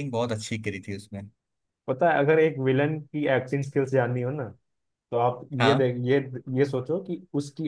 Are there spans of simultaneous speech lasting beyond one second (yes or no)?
no